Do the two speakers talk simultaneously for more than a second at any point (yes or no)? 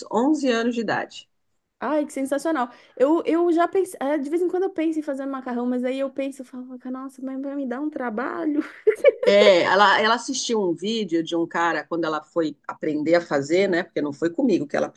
no